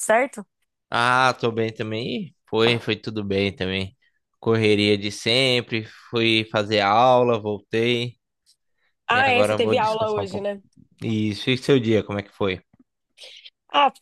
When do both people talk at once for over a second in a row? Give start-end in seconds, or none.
9.1-10.5